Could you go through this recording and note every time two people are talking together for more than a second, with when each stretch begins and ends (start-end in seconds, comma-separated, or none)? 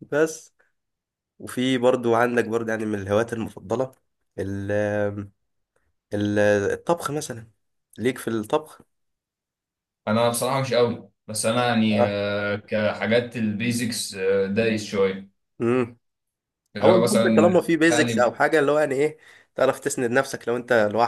16.8-18.3